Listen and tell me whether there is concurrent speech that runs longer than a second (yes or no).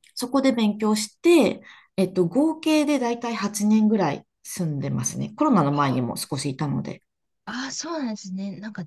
no